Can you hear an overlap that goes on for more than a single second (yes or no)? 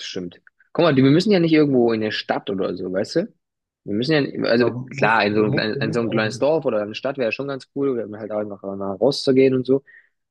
yes